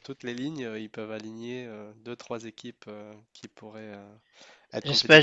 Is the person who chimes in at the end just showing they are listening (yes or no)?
no